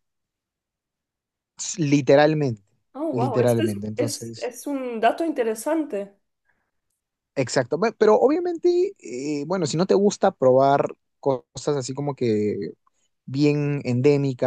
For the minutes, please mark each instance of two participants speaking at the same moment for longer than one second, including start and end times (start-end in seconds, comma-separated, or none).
3.1-4.5